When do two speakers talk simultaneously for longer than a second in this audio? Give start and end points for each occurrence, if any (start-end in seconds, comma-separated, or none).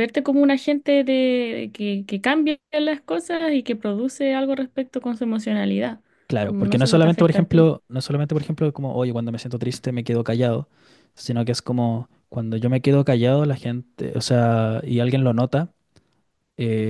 6.4-7.7